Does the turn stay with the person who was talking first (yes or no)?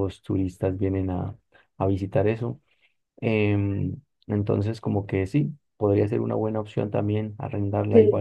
yes